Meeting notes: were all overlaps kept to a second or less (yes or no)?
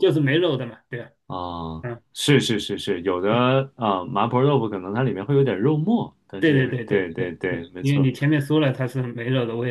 no